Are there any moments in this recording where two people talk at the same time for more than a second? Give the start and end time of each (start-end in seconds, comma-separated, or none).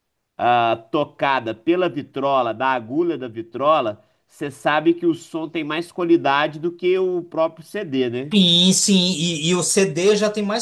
none